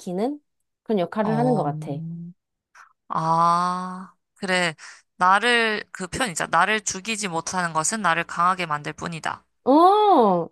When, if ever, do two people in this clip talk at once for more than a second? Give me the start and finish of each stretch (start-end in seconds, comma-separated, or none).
none